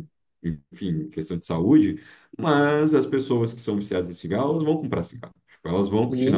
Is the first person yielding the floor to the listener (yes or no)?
yes